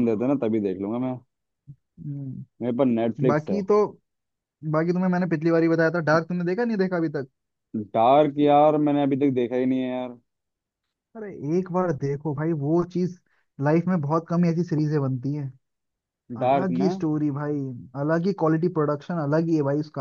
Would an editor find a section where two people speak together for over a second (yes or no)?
no